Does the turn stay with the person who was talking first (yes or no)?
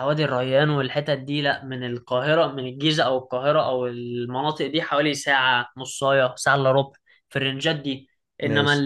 yes